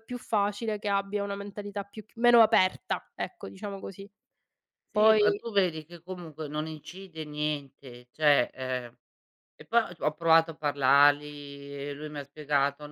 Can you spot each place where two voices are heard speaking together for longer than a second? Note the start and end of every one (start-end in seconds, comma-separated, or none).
none